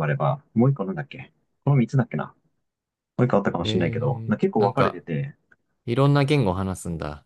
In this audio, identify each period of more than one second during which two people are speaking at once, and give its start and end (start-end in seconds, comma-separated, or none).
3.6-5.0